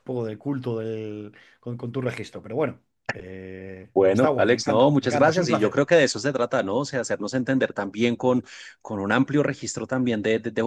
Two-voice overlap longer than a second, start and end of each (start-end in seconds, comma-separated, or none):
3.9-5.8